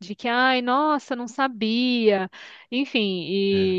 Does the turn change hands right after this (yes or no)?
no